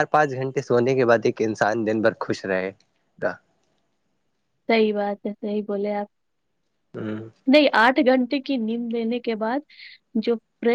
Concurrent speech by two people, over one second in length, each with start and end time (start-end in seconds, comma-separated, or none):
none